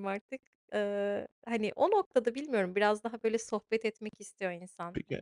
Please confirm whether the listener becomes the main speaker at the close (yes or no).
yes